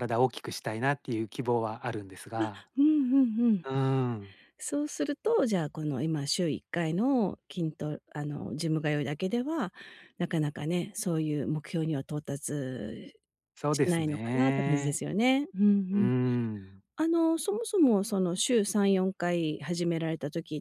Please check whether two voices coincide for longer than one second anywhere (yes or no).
yes